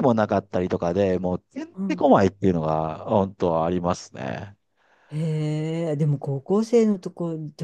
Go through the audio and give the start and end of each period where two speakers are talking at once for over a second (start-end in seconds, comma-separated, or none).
none